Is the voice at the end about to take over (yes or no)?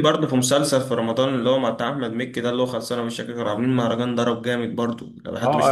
yes